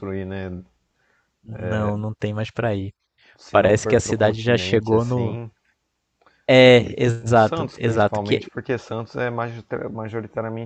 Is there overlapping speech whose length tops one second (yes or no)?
yes